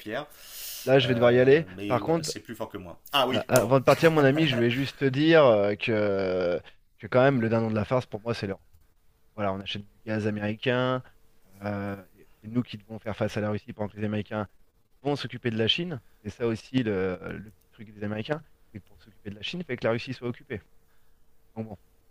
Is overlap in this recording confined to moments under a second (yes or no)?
no